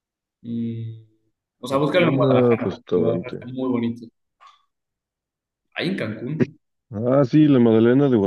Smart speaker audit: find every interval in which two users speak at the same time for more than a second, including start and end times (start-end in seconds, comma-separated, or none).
1.7-3.5